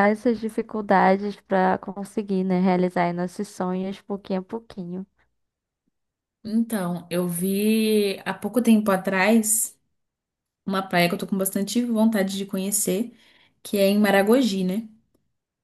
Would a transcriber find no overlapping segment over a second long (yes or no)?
yes